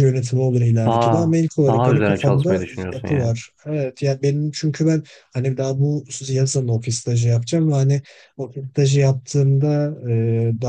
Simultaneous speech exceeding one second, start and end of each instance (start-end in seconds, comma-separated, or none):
0.8-3.3